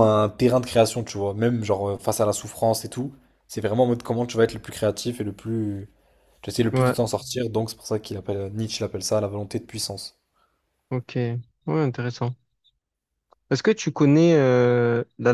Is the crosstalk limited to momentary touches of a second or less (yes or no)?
yes